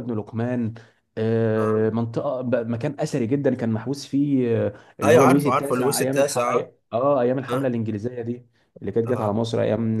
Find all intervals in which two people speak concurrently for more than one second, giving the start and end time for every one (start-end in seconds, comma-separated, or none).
5.0-6.7